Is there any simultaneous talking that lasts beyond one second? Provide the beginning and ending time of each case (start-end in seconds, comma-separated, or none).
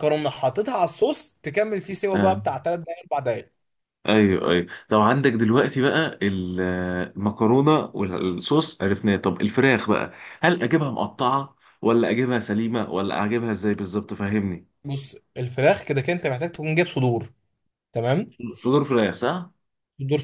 none